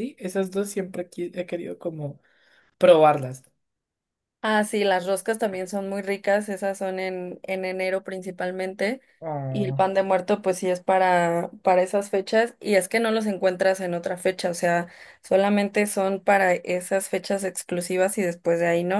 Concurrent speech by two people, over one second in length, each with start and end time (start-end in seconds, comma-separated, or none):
none